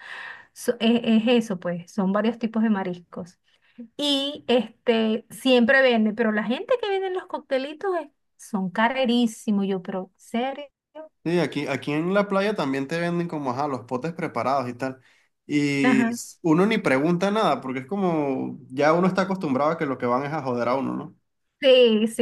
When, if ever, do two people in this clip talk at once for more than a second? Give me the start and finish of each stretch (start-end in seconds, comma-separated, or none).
none